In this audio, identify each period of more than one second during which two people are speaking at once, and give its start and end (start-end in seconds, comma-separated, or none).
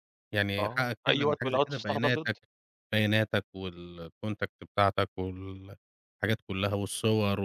0.6-2.4